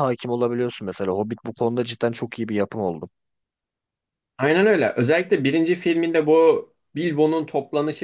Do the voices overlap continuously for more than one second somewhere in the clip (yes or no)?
no